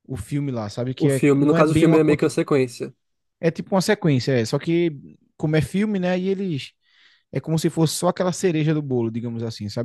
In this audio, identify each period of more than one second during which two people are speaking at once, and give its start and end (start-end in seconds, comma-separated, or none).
1.0-2.4